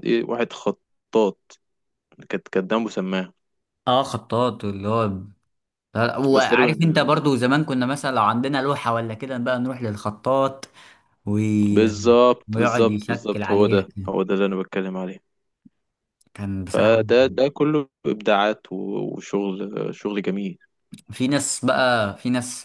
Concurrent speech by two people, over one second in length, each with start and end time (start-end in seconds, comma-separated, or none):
12.5-14.1